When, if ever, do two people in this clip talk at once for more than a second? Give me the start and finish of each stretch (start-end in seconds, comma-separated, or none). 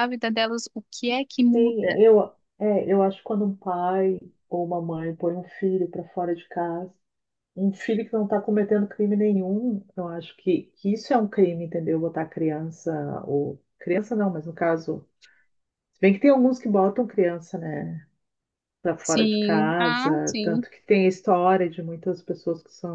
19.0-20.6